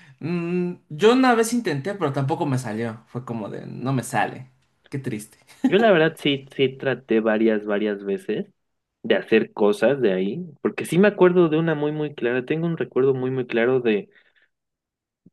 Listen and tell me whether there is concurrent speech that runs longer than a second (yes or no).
no